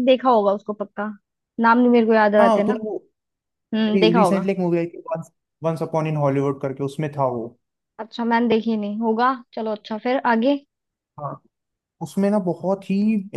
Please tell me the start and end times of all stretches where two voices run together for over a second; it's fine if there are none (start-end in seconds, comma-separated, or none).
none